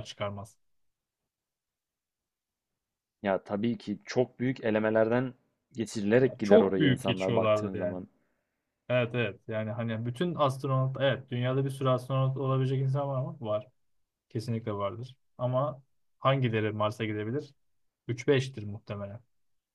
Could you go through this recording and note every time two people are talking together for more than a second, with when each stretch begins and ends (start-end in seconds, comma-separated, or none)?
6.2-8.0